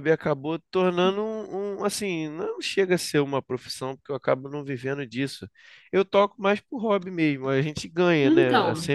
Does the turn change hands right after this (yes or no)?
no